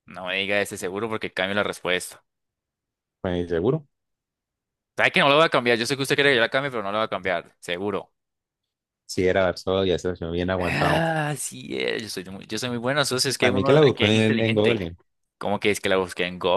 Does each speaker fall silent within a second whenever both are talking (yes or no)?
no